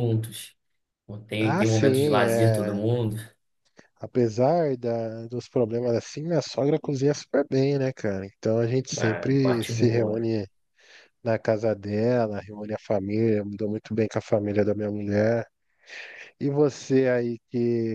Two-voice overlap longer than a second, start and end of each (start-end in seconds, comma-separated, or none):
1.4-2.8, 8.9-10.3